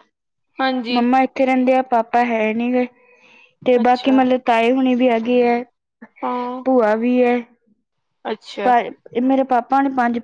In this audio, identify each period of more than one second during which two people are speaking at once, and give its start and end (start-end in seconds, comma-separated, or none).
none